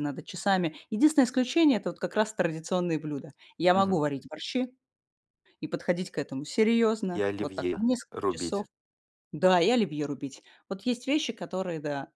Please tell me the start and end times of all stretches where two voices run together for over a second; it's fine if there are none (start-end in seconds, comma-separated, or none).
7.1-8.6